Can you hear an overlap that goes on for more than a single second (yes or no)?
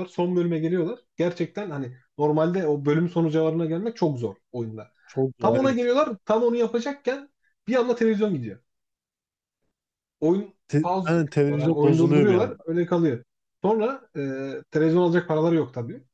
yes